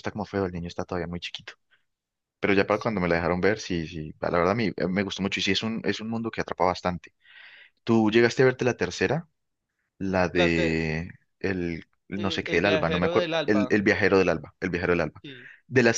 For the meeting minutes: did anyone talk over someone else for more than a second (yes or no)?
yes